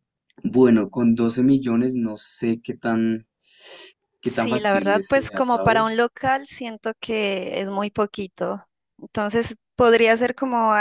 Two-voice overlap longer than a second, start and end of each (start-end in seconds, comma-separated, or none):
4.2-5.9